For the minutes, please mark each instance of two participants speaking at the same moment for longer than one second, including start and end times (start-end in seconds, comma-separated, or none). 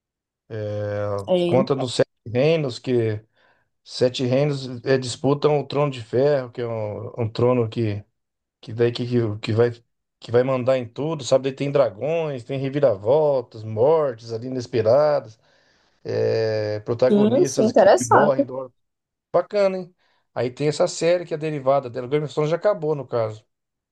17.1-18.5